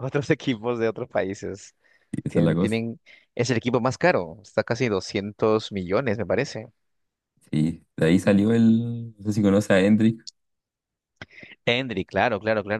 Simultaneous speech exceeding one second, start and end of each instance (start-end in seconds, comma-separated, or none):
none